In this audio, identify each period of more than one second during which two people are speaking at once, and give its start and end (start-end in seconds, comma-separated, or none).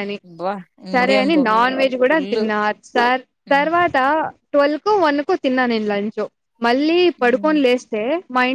none